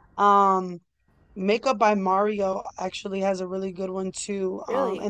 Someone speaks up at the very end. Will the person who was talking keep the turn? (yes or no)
yes